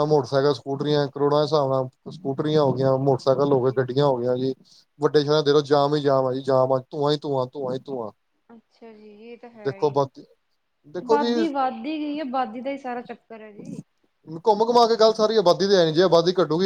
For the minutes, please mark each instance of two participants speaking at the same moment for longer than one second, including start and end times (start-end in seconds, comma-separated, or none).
none